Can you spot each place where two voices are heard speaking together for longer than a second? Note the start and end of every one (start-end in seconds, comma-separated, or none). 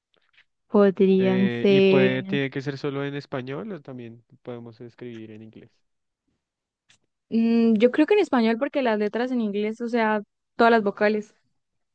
1.2-2.4